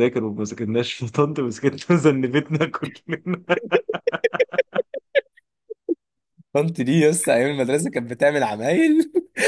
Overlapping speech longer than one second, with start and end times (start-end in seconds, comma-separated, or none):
none